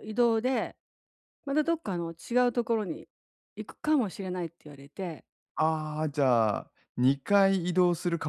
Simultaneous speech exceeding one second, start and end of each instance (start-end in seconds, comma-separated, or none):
none